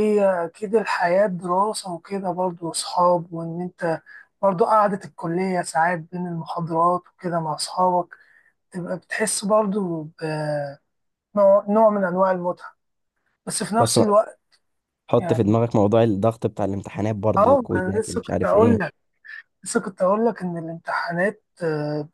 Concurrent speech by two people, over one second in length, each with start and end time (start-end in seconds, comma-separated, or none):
17.4-18.8